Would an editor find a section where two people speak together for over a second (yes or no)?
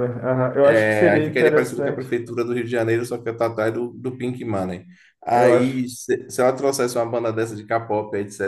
yes